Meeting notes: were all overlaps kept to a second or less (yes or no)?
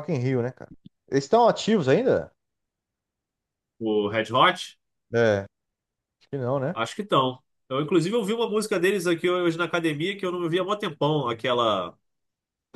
yes